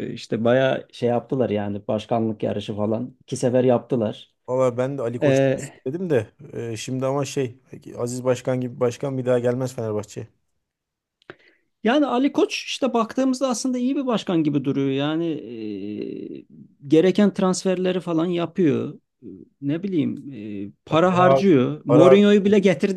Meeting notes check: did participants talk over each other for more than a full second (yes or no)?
yes